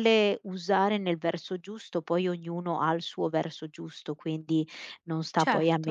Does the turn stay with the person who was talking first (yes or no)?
yes